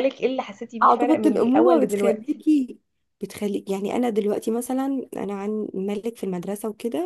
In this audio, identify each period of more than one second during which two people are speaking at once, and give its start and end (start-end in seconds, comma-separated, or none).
0.8-2.4